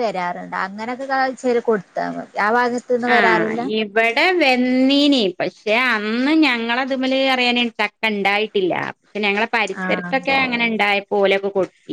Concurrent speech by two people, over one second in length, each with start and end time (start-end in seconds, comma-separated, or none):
none